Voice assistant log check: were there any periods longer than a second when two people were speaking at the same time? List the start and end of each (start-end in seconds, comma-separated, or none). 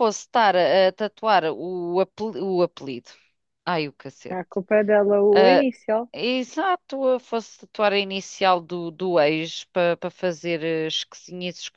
none